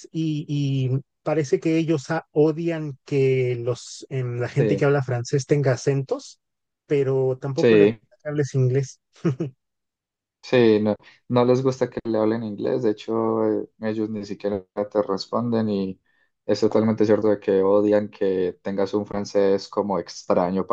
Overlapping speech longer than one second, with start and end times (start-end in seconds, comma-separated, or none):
none